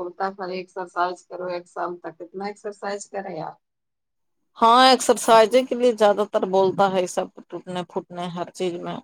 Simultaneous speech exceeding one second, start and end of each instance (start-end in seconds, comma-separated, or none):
none